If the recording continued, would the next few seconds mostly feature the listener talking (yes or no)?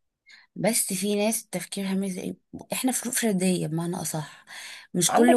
no